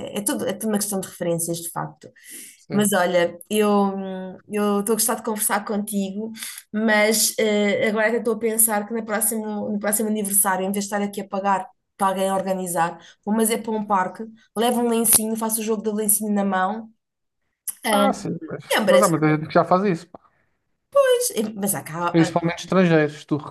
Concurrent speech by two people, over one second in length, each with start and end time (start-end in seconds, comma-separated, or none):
none